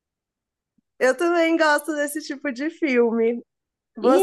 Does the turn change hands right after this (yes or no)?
no